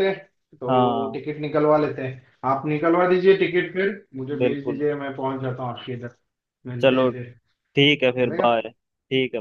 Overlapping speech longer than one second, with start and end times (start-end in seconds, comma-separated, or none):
none